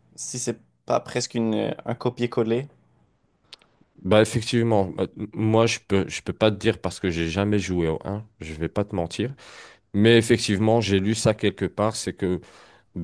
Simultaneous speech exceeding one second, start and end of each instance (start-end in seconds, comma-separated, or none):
none